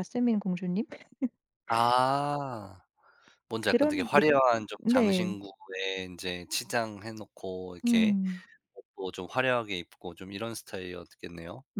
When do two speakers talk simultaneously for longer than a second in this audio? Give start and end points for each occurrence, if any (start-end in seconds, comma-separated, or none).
none